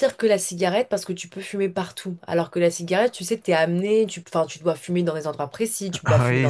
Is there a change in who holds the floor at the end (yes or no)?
yes